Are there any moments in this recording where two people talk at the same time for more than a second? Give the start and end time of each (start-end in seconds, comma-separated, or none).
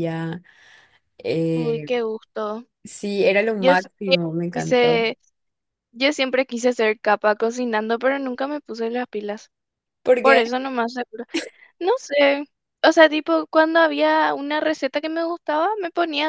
3.6-5.1